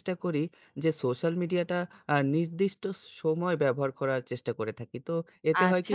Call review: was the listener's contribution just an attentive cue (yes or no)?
no